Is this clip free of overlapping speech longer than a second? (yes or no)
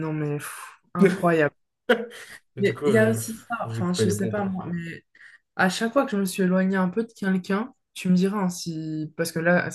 no